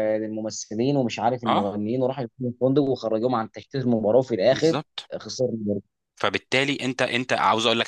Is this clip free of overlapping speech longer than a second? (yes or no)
yes